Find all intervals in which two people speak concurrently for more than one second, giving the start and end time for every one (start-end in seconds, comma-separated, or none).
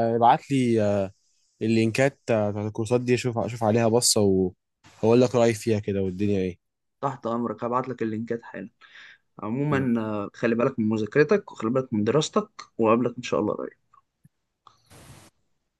none